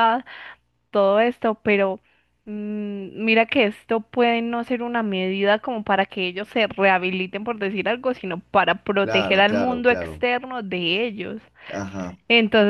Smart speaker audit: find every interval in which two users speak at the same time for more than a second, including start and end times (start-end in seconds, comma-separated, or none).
9.0-10.2